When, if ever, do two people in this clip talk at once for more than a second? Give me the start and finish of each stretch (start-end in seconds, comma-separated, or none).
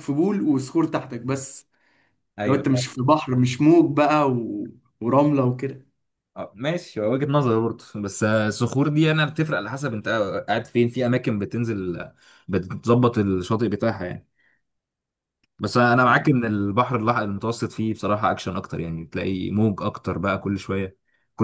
none